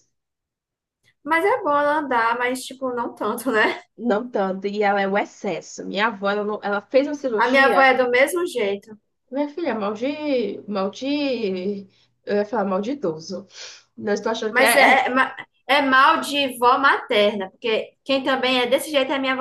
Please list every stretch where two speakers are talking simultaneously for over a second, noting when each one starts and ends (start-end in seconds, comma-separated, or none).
none